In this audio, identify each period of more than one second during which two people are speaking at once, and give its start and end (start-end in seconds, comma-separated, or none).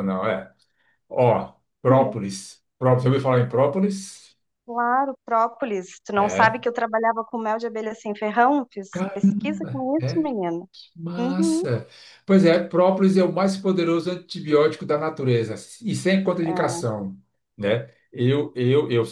8.9-10.3